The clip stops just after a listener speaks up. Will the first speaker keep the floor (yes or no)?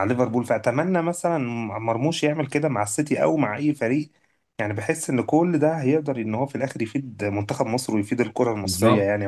no